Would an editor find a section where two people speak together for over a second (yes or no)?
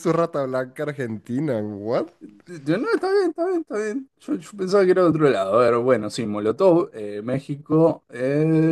no